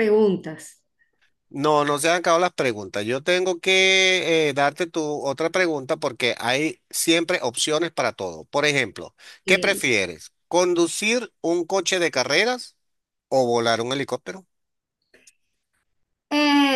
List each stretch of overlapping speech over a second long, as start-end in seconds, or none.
none